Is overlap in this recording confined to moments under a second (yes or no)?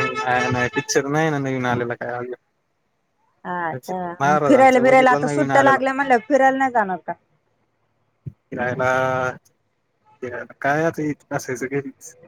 no